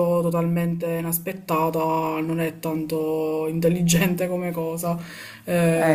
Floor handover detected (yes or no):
no